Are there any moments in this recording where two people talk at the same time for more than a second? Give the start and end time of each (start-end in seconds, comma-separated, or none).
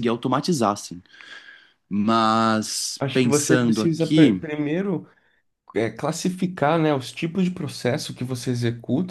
3.0-4.4